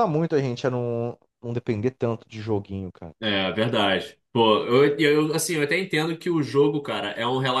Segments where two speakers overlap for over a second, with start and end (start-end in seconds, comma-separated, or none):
none